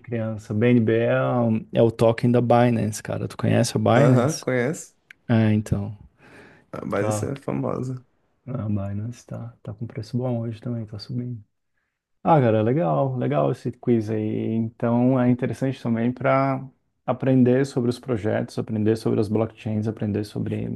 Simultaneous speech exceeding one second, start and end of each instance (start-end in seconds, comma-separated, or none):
none